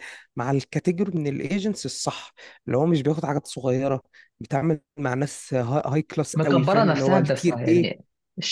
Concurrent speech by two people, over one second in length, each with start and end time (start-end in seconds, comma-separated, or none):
6.3-7.9